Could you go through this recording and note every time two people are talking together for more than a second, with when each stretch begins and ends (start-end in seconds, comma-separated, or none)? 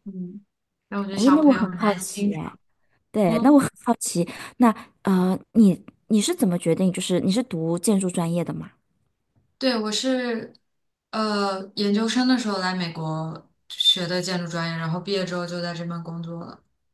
1.1-2.4